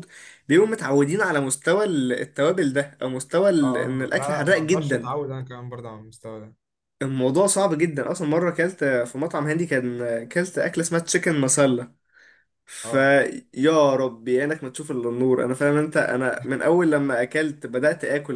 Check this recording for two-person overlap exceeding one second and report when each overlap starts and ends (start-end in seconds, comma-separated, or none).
3.6-5.2